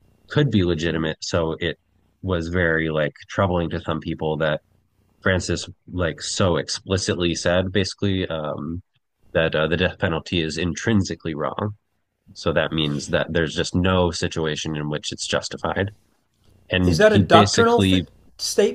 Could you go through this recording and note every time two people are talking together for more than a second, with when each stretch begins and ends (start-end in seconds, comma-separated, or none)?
16.8-18.1